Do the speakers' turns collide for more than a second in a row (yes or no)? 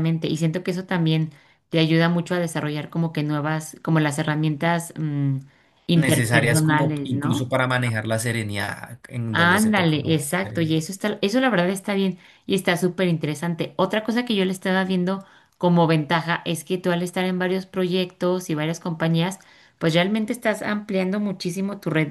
yes